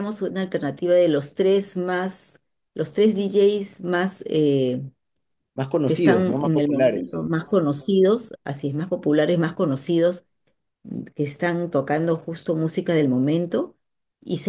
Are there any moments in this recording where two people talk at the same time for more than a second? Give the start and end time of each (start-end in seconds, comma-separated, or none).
5.8-7.2